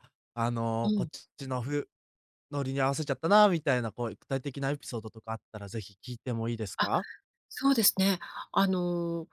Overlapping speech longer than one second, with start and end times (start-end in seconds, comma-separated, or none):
none